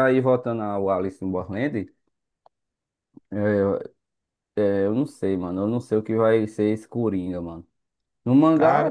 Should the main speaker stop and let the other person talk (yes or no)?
no